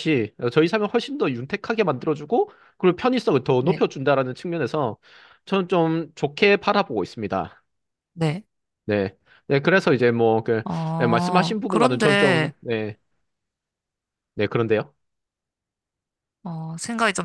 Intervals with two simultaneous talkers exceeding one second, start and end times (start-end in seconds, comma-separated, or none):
10.6-12.5